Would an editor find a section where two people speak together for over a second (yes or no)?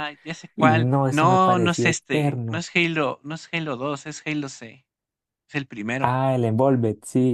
yes